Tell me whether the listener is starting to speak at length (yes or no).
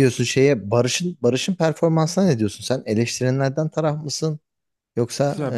yes